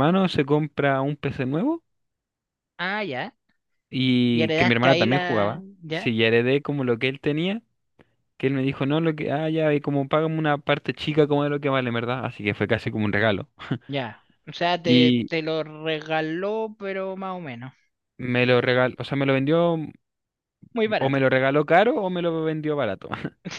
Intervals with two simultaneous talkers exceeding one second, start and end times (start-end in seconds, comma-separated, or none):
4.3-6.1